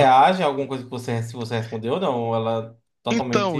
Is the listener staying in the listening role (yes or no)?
no